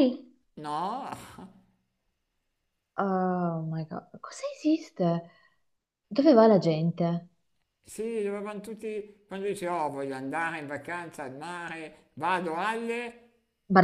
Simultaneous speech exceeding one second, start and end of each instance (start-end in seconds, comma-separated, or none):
none